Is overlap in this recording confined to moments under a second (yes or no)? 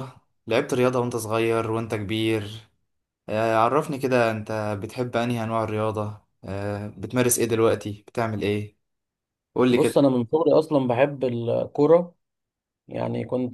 yes